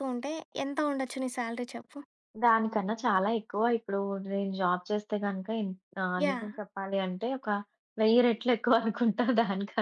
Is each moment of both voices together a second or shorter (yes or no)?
yes